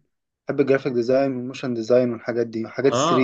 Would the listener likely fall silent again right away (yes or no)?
no